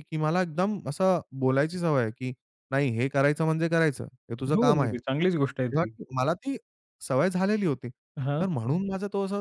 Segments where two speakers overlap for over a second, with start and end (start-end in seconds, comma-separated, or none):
4.6-5.9